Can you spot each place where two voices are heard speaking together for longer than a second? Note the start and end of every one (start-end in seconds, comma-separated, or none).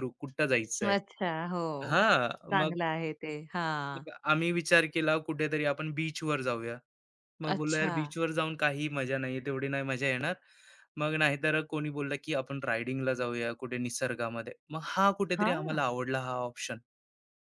none